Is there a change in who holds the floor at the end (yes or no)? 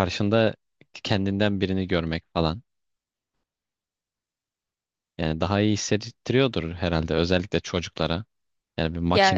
no